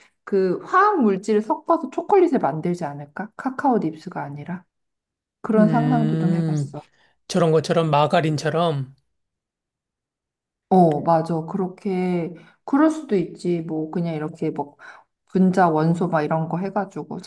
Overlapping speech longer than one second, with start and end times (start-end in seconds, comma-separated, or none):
5.5-6.7